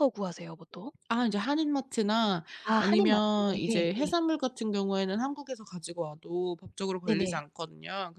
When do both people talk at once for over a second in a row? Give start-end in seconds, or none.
2.6-4.1